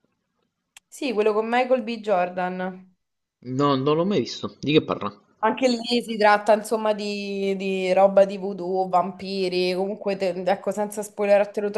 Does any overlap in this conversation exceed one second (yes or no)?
no